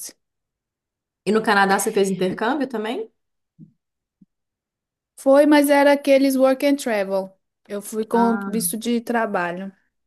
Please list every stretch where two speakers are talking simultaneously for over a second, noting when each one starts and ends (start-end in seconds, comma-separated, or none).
none